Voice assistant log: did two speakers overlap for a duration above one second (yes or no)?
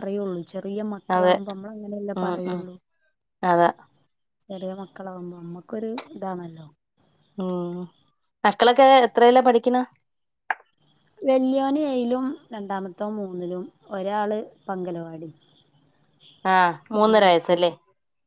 no